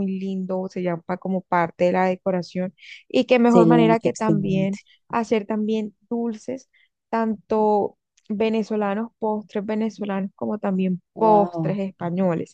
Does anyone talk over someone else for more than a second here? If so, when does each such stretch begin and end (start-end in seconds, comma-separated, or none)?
3.4-4.8